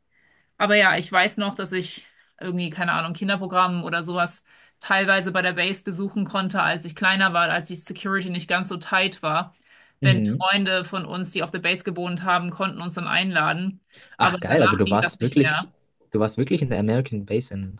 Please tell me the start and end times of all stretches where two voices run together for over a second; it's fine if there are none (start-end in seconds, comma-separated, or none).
14.2-15.7